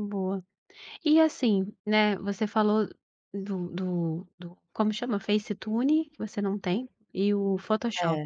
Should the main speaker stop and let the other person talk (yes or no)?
no